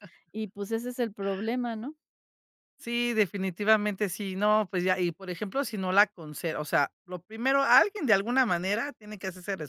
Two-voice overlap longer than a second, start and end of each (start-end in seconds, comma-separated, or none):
none